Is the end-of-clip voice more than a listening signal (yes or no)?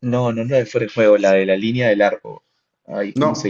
yes